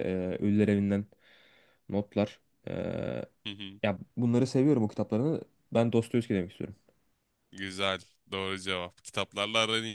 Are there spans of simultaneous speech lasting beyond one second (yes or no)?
no